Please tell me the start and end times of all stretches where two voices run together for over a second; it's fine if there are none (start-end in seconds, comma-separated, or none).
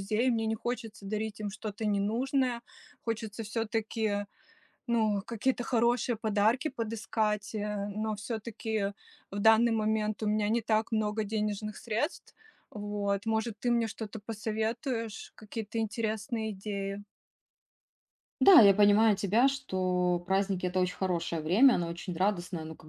none